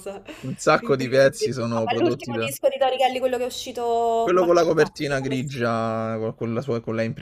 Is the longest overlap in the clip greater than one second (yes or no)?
yes